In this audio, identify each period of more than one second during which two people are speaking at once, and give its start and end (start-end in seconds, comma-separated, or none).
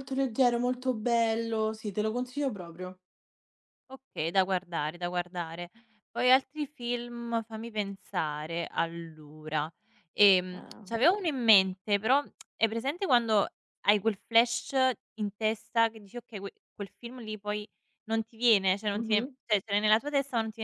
none